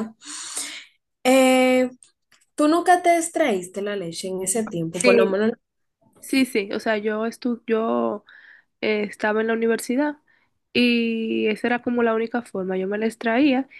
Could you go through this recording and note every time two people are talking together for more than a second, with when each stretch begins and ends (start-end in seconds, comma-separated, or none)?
none